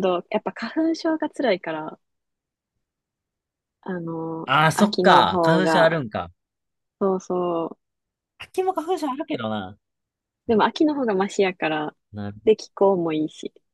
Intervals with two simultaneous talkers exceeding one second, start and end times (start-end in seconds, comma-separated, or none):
4.5-6.0